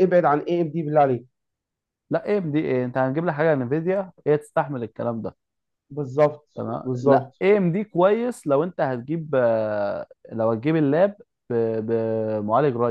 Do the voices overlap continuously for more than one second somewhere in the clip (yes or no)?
no